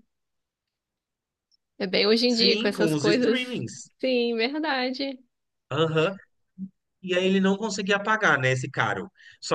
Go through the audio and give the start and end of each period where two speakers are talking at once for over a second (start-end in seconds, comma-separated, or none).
2.3-3.6